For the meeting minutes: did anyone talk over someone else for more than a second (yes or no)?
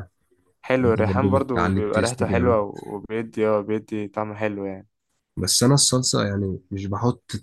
yes